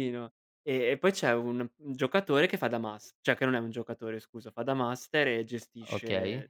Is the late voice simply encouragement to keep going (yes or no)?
yes